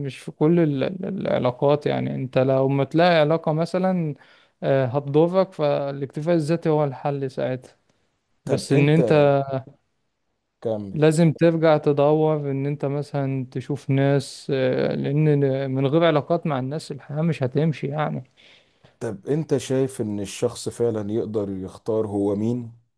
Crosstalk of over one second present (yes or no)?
no